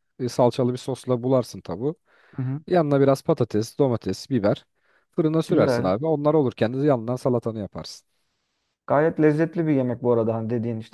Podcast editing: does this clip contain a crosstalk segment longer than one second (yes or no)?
no